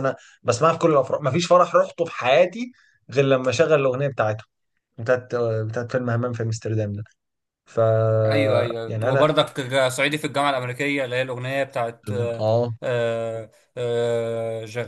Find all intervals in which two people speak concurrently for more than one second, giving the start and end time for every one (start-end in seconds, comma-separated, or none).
none